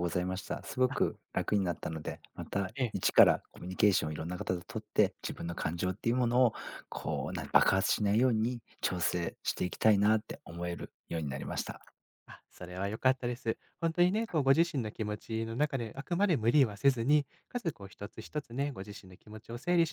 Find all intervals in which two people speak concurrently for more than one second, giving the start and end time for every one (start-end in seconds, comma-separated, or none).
none